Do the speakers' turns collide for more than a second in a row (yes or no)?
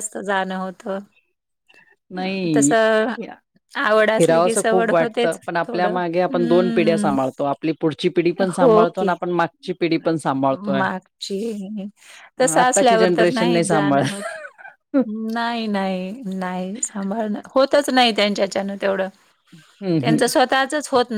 yes